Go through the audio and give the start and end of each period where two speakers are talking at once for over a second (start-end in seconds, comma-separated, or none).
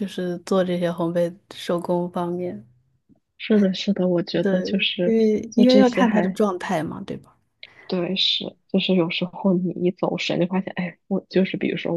4.4-6.4